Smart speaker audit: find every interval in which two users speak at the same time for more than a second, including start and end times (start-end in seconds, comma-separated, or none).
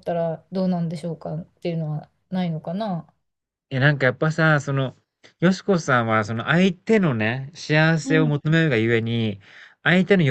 none